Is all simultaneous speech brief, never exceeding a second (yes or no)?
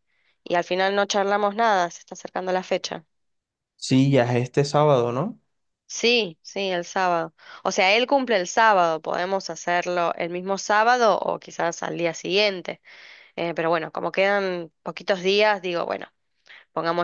yes